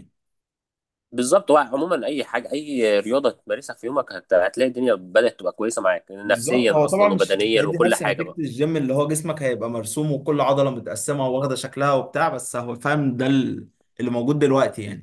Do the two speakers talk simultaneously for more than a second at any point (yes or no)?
yes